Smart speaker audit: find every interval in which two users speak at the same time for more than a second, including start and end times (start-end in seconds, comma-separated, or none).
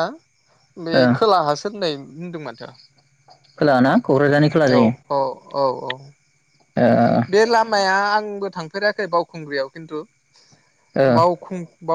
none